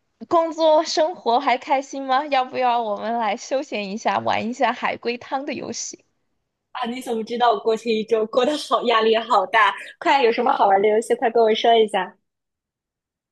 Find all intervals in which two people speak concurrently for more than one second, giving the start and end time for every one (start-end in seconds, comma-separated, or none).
none